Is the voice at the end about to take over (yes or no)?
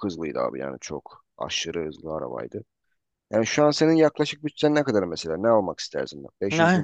yes